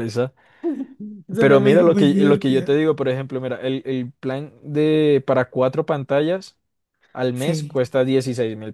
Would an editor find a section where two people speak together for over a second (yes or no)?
yes